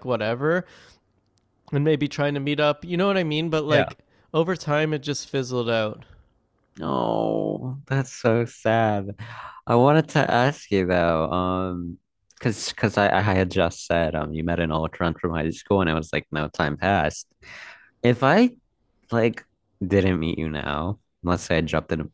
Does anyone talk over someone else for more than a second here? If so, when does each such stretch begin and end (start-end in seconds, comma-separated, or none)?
none